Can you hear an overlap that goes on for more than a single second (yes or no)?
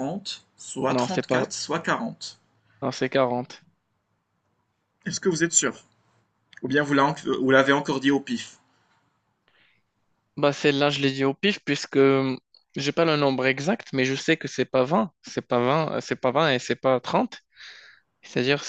no